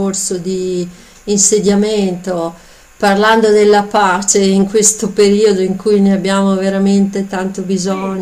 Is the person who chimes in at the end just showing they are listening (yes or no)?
yes